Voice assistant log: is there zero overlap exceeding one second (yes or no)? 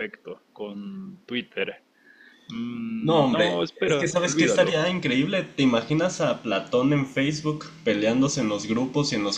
no